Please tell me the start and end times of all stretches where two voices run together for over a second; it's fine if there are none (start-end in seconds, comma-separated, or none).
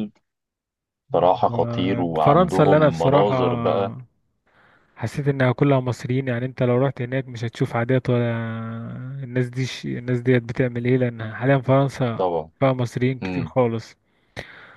1.5-3.4